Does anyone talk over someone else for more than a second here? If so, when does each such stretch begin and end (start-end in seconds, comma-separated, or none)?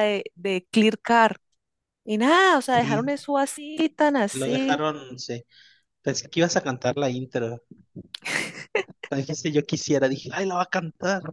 none